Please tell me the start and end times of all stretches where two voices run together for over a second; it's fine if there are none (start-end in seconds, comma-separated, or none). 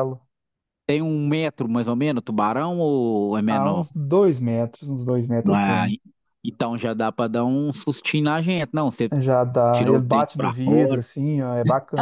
9.7-11.0